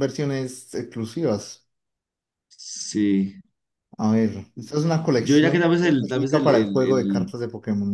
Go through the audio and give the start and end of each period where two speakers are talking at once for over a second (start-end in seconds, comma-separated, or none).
5.2-7.3